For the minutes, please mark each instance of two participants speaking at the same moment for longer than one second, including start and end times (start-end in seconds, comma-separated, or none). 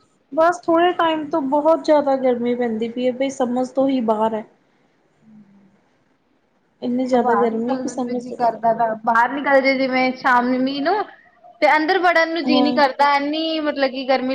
7.2-8.6